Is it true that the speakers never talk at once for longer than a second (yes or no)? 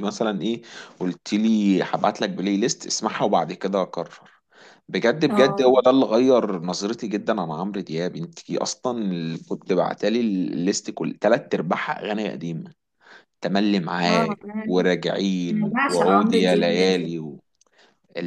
no